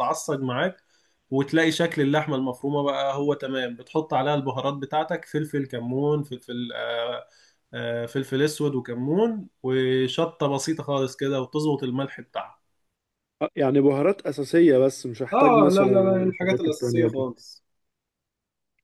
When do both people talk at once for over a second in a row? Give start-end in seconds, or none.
15.3-17.3